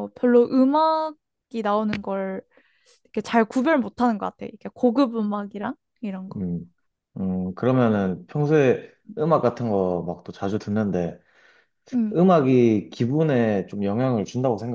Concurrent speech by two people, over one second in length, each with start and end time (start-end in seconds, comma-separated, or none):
none